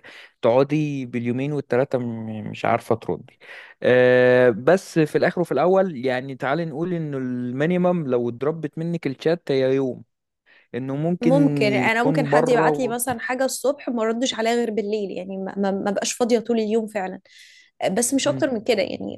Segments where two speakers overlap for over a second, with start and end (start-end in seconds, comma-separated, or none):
11.2-13.0